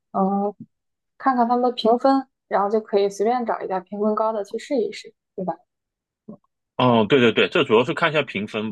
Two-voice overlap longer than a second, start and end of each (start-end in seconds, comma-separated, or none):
none